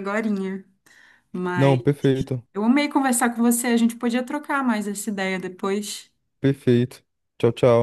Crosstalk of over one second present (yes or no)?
no